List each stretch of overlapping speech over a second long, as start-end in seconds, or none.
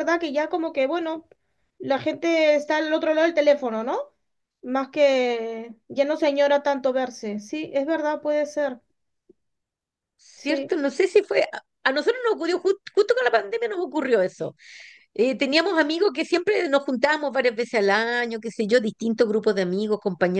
none